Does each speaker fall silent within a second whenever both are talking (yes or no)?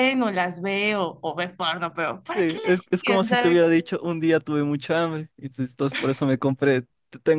no